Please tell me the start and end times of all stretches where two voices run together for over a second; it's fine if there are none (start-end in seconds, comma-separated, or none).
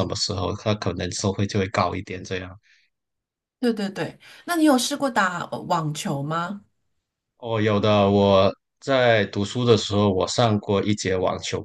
none